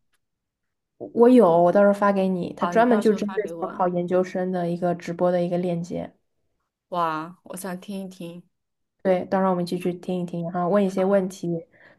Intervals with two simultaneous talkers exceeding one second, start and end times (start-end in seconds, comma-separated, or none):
2.6-3.9